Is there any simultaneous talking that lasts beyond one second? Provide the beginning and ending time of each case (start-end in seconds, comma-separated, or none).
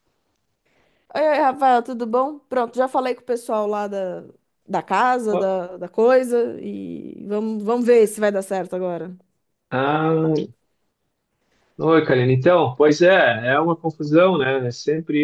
none